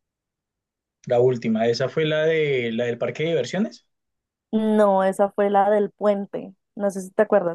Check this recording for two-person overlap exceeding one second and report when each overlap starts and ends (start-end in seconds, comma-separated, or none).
none